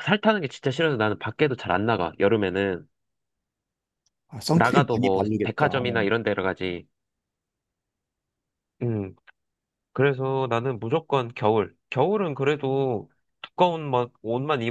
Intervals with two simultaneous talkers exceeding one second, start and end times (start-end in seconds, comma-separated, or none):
4.5-6.0